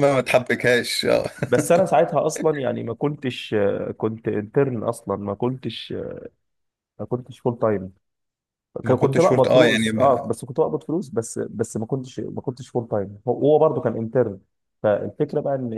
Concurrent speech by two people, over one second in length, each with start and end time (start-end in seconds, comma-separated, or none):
8.8-10.2